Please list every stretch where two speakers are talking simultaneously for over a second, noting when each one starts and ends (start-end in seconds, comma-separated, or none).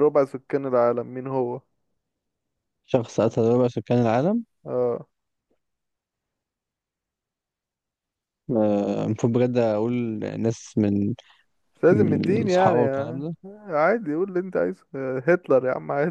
11.9-13.2